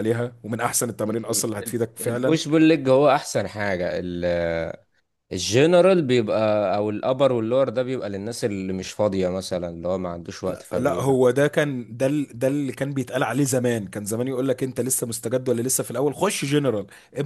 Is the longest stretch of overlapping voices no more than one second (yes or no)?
no